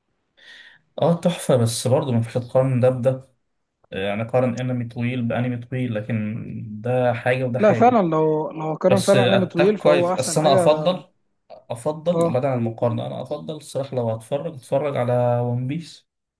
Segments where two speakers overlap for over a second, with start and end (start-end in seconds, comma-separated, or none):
8.9-10.6